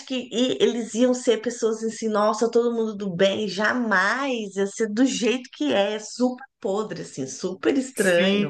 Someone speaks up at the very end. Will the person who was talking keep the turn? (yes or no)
no